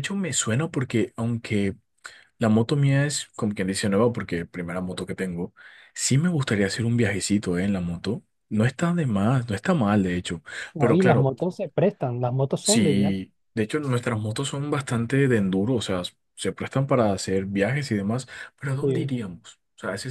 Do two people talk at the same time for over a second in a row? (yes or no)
no